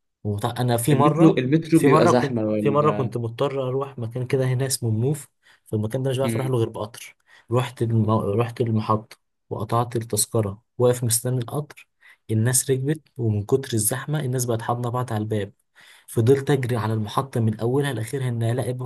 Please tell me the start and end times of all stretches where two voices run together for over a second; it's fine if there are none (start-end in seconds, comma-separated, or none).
0.9-3.2